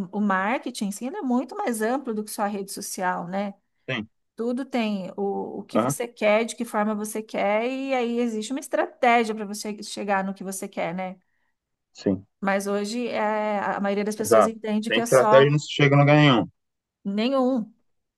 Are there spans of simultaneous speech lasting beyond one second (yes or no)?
yes